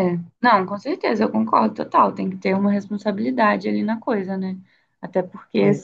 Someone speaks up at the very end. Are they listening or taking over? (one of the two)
listening